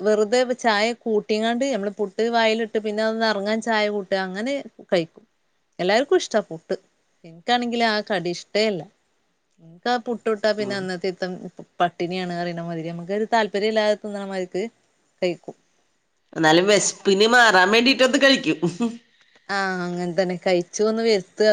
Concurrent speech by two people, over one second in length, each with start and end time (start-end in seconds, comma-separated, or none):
none